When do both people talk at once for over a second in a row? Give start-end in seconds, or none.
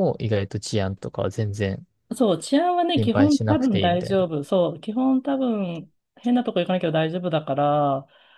3.0-4.3